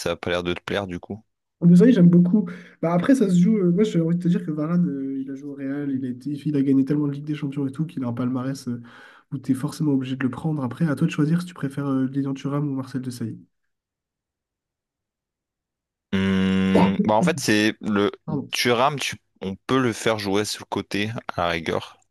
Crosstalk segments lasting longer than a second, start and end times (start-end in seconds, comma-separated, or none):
none